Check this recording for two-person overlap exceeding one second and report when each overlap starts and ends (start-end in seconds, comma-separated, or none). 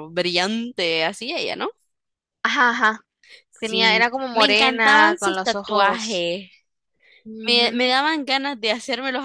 3.6-6.2